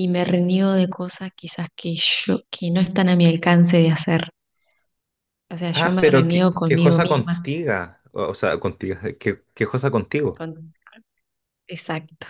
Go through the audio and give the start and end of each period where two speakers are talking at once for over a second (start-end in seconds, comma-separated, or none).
5.7-7.5